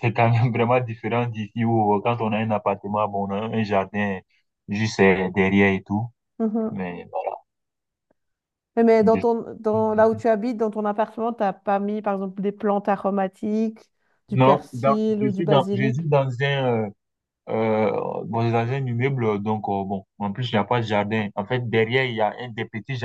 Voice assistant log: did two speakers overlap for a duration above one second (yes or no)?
yes